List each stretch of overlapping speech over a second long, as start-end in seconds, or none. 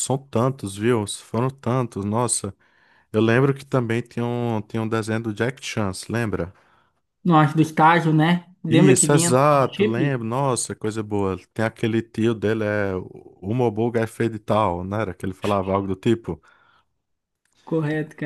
8.7-10.2